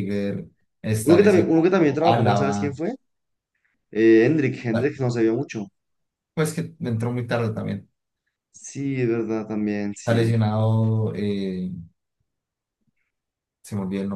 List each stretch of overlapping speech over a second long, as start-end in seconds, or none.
1.0-2.8